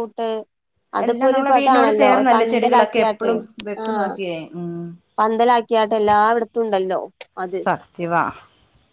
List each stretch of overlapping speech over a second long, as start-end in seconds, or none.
1.1-3.3